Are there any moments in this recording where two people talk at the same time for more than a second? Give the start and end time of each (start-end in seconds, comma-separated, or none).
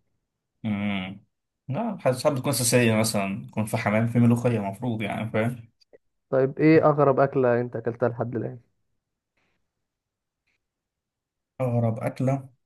none